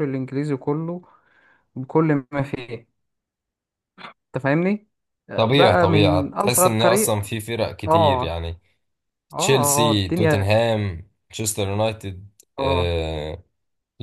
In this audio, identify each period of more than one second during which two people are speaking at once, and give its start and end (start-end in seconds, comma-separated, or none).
5.3-7.2